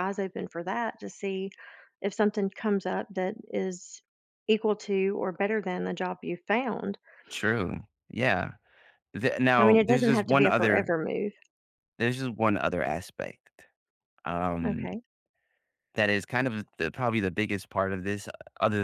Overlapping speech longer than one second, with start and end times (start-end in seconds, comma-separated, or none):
9.6-10.9